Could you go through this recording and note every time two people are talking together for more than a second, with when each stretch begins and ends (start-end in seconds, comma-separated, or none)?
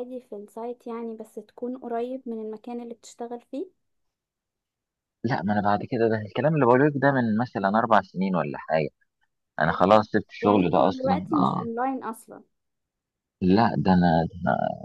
10.4-11.7